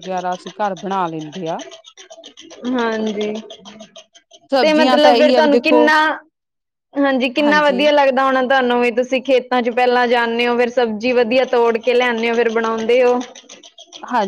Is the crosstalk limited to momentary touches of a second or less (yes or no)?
no